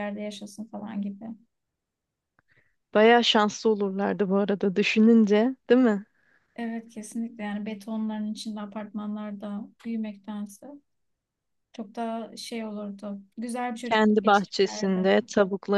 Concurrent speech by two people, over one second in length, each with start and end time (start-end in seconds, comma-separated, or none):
13.8-15.1